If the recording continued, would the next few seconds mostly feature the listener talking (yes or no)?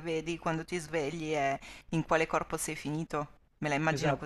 yes